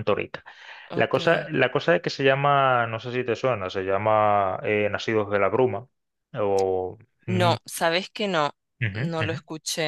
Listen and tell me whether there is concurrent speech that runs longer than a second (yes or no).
no